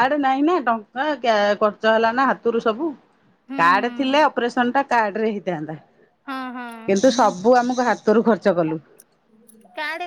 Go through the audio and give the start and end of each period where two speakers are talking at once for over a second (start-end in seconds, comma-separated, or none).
none